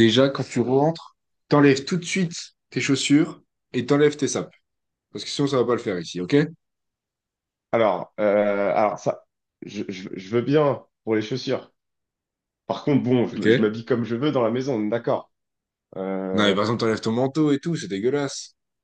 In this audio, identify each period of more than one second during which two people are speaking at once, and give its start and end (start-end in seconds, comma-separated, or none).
none